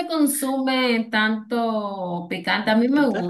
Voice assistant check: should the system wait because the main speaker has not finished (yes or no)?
yes